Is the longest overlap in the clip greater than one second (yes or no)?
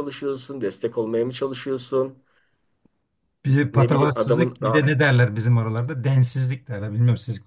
yes